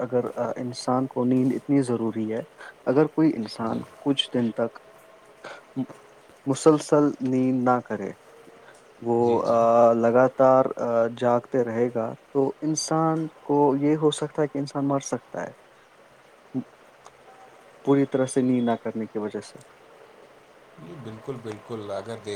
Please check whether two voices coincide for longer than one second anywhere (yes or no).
no